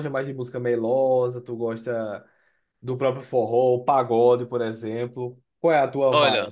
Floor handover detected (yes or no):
yes